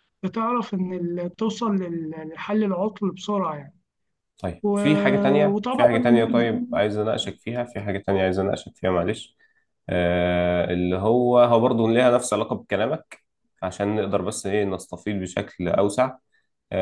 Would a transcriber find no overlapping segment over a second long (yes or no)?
yes